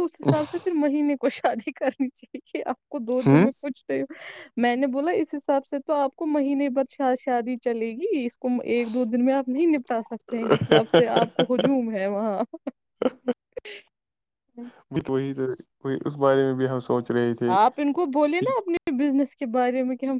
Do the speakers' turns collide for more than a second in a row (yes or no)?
no